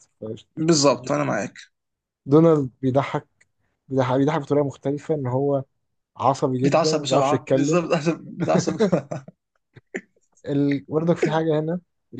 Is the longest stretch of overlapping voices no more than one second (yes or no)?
no